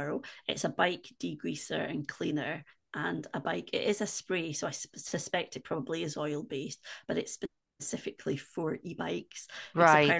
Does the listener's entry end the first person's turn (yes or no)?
no